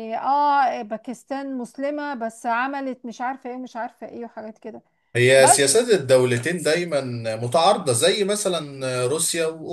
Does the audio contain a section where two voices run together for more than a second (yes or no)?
no